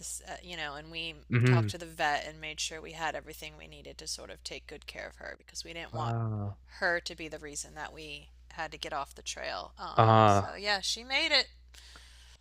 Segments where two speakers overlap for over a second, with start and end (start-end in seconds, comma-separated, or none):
none